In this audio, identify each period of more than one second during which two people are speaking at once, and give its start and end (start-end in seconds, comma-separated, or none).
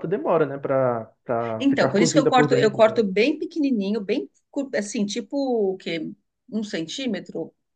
1.6-3.1